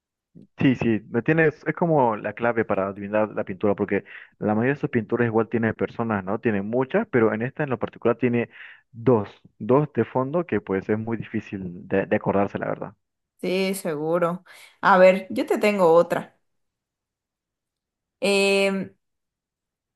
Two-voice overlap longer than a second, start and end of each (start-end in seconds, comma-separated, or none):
none